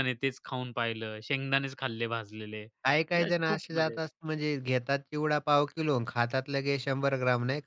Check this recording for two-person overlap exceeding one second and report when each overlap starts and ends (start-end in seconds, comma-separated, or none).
2.8-4.1